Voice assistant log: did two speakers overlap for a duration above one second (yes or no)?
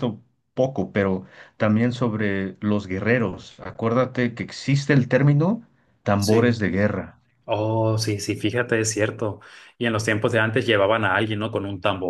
no